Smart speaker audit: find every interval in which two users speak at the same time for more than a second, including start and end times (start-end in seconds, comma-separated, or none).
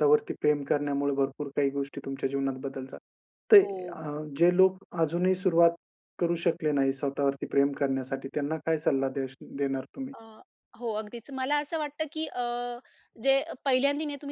none